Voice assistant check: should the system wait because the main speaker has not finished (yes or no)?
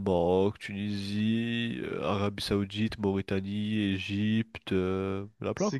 no